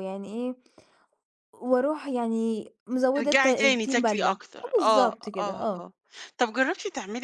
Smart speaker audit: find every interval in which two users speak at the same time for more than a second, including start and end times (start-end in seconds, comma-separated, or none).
3.1-5.9